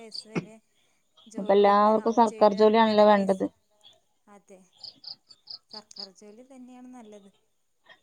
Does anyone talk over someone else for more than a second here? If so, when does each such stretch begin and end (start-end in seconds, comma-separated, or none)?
1.4-3.5